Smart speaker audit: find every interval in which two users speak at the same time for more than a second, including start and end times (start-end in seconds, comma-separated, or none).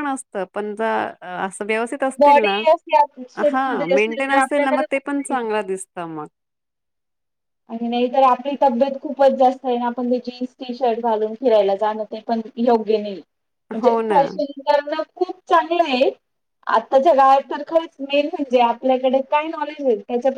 3.5-5.3